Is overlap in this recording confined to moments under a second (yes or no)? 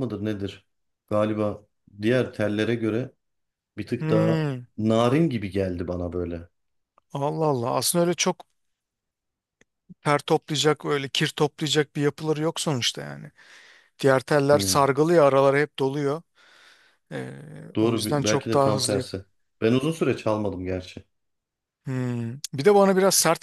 no